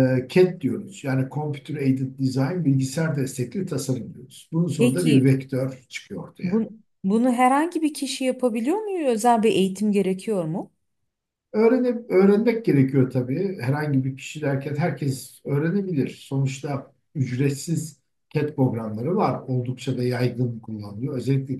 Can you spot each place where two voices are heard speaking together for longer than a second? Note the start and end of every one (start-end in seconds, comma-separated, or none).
none